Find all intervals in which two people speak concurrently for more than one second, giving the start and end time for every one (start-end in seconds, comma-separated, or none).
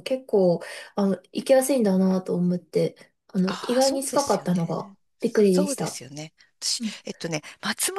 3.5-6.0